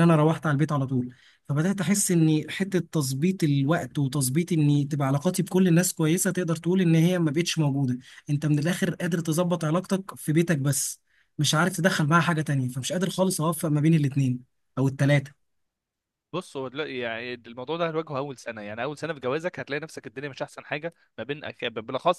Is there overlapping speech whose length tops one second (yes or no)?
no